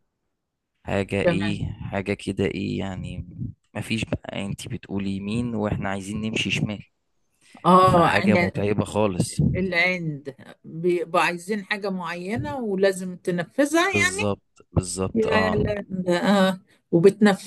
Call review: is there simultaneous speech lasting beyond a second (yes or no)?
no